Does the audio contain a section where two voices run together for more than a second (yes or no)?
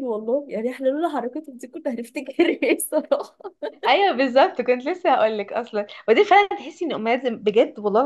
no